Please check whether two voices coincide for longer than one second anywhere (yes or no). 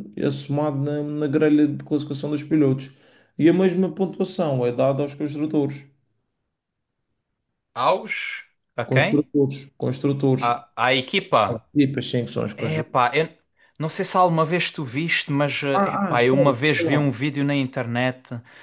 yes